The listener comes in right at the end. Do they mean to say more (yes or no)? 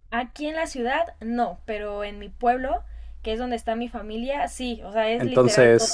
yes